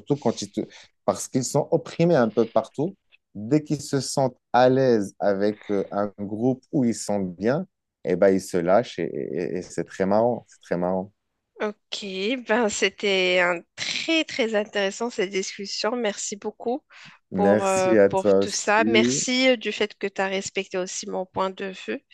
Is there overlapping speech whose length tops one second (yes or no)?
yes